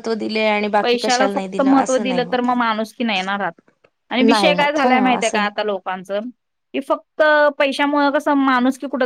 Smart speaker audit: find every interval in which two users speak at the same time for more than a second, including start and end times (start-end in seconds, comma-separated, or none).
1.0-2.5, 4.2-5.5